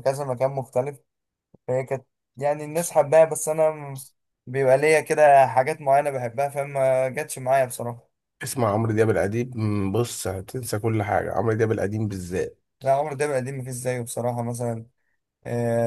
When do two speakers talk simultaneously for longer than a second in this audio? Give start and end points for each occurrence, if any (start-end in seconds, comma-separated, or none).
none